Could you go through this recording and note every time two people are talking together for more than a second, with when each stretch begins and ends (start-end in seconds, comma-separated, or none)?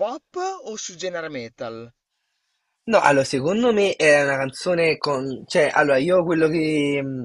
none